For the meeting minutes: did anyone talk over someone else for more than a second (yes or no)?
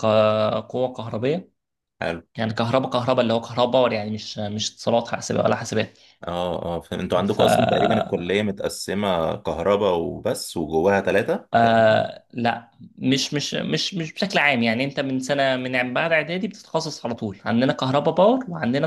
no